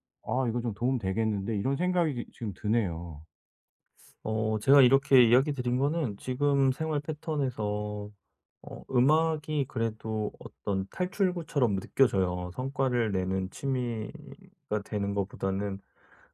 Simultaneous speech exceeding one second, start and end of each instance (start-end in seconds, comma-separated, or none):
none